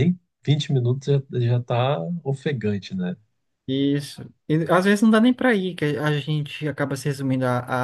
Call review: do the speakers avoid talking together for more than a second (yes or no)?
yes